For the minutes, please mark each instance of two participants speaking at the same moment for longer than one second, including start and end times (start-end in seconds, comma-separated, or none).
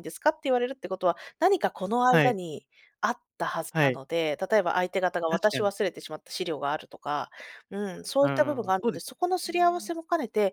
8.2-9.9